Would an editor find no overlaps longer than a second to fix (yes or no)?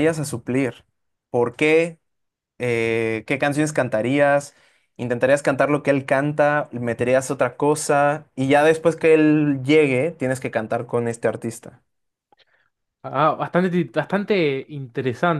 yes